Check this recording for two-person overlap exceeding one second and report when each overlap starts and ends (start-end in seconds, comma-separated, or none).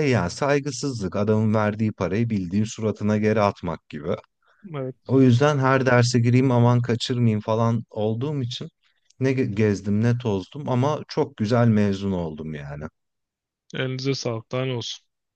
none